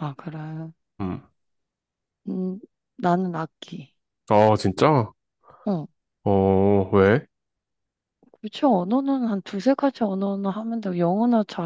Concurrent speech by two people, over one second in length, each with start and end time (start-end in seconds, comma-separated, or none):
none